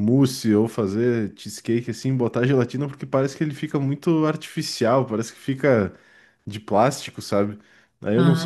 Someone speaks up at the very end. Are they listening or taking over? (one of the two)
listening